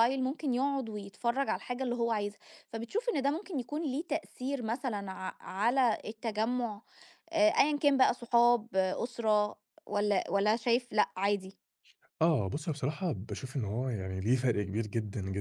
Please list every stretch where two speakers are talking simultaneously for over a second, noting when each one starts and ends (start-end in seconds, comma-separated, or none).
none